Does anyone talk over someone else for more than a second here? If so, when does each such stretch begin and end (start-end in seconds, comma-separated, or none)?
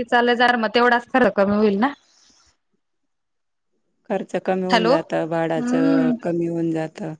4.7-6.1